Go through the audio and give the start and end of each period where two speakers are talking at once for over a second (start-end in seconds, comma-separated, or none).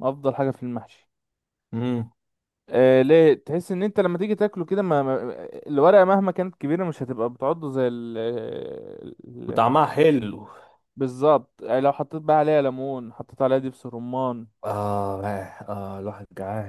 none